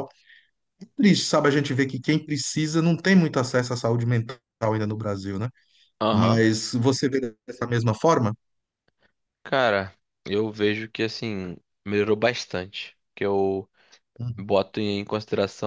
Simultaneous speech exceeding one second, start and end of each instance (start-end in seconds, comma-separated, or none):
none